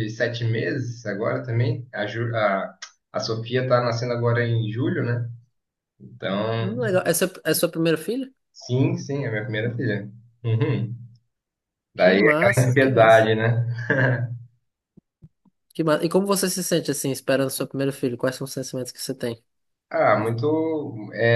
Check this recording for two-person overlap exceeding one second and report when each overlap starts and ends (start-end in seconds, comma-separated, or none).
11.9-13.3